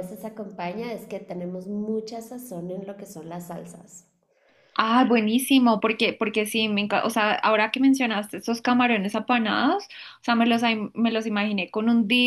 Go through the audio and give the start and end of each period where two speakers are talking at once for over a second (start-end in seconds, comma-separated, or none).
none